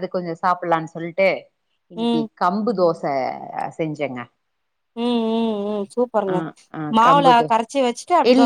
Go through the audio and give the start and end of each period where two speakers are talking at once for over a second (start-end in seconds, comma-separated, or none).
none